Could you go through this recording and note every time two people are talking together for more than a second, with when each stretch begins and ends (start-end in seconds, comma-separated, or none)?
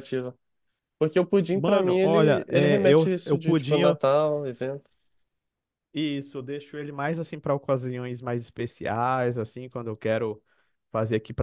1.5-3.8